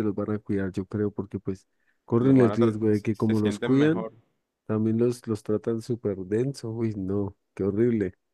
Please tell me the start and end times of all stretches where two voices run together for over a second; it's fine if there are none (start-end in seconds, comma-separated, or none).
2.2-4.1